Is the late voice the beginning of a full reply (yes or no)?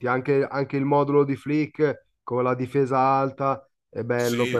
no